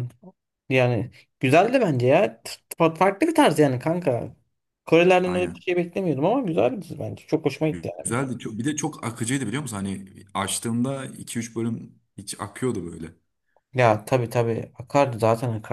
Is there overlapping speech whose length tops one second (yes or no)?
no